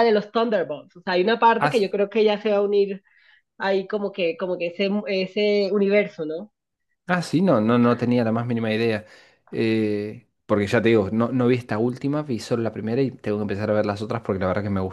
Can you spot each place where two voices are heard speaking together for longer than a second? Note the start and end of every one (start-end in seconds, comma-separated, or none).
none